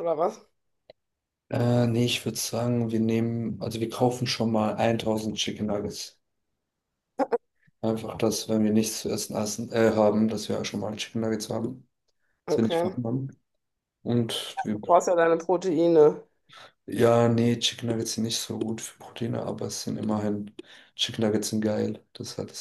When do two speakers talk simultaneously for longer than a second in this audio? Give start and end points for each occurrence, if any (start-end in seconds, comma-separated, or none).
none